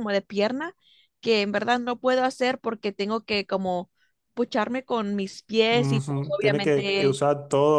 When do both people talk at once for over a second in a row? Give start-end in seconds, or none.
5.7-7.2